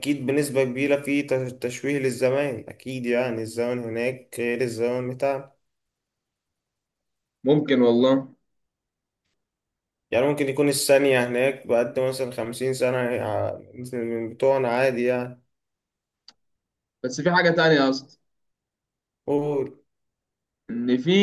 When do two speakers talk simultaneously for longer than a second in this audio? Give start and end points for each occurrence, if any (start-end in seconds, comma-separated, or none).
none